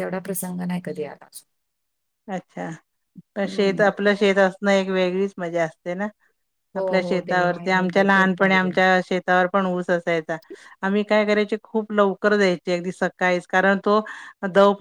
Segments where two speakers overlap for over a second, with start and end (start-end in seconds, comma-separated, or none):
6.8-8.8